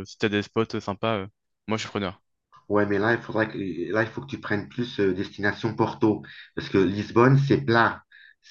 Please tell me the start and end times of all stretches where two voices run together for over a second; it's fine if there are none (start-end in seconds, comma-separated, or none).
none